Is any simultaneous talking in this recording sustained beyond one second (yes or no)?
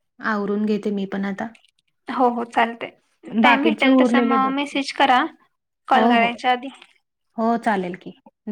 yes